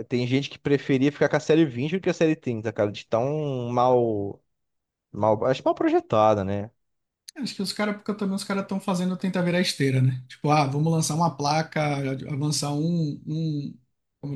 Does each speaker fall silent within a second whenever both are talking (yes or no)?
yes